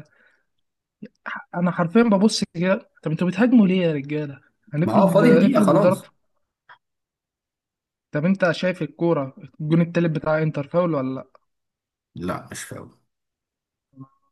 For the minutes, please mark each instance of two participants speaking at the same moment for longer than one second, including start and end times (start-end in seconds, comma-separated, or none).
4.8-6.1